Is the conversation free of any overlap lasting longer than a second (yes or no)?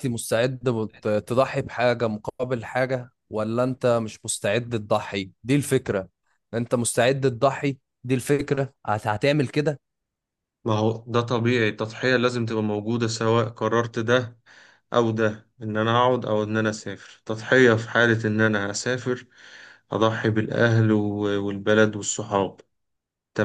yes